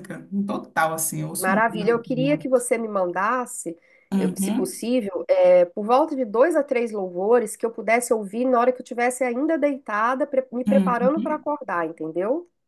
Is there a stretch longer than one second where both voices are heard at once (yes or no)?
yes